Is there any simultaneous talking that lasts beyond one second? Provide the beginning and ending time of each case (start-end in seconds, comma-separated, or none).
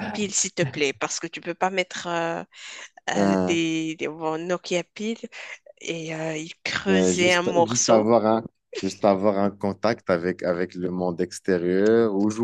6.8-8.1